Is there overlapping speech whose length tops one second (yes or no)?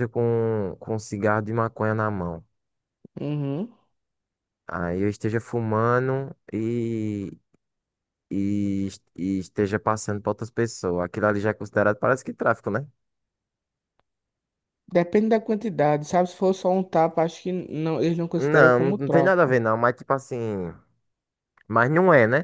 yes